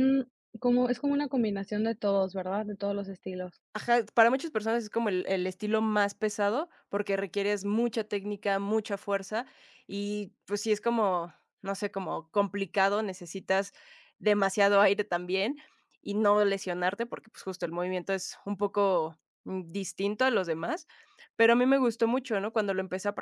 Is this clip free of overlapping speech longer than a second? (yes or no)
yes